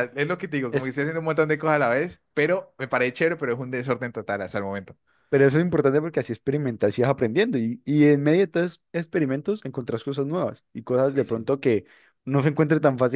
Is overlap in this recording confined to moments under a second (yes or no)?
yes